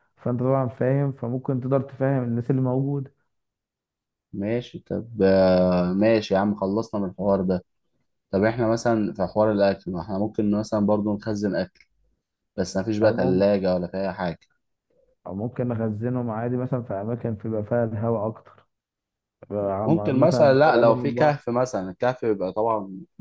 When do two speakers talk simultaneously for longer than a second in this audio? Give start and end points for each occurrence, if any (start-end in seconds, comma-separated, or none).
19.9-21.4